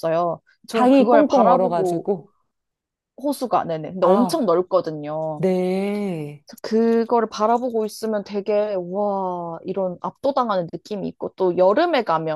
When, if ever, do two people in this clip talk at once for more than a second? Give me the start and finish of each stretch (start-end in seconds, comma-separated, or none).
0.7-2.1